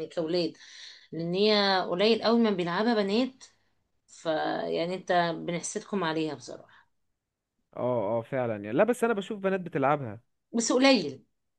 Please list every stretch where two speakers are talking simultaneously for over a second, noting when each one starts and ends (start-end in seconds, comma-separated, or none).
none